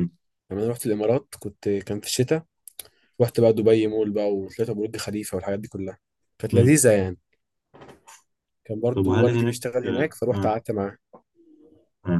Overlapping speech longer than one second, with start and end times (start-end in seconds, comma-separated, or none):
8.9-10.6